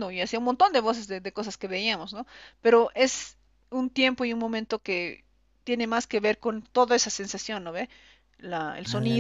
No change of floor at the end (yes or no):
yes